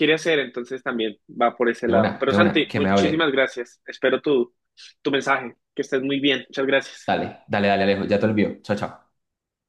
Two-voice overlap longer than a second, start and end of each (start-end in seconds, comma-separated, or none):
1.8-3.3